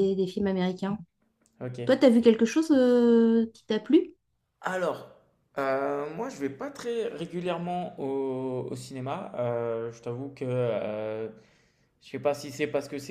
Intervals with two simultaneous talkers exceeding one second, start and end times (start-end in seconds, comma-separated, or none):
none